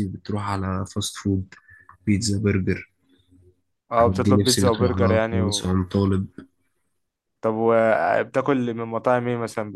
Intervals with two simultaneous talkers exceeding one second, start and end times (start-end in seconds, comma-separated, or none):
3.9-5.7